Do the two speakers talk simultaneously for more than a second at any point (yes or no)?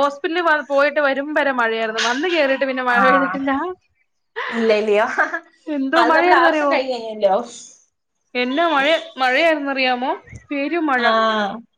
no